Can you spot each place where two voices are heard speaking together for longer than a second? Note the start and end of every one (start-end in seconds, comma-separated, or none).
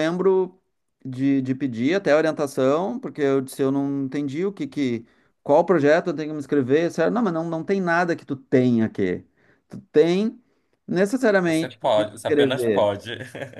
11.4-12.9